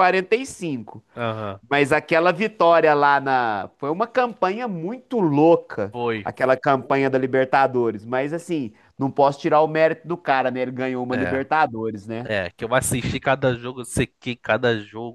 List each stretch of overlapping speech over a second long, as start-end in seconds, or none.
none